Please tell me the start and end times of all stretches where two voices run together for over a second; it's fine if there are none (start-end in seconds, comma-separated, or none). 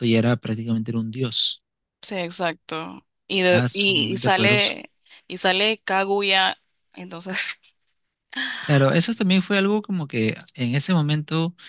3.5-4.7